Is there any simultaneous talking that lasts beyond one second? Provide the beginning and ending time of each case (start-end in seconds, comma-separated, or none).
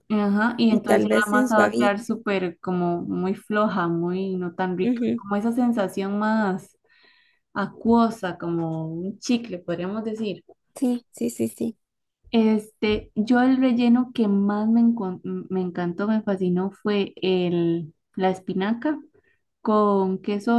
0.7-2.1